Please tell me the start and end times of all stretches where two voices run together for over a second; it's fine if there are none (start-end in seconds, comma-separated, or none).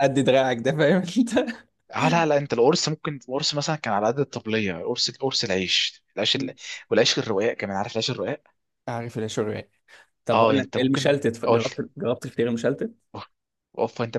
10.3-11.8